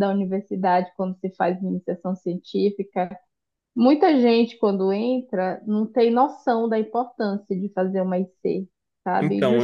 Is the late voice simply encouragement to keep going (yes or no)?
yes